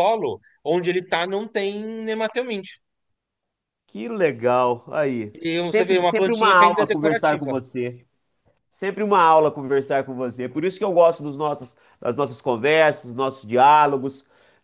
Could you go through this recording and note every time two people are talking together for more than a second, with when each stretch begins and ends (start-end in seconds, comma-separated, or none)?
5.3-7.6